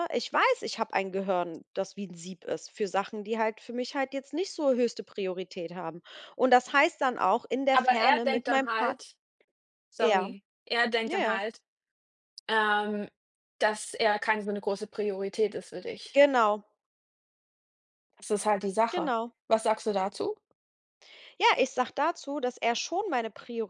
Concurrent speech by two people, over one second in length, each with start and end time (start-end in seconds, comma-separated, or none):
7.7-9.0